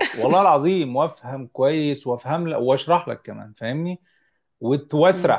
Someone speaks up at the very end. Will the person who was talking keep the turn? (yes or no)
yes